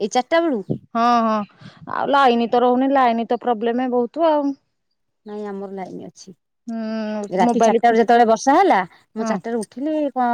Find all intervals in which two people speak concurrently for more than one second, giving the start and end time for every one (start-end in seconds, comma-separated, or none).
none